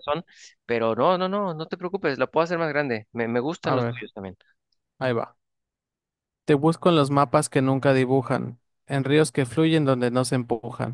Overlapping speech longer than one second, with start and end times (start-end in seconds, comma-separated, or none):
none